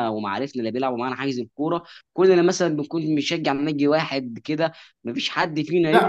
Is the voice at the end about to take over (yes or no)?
yes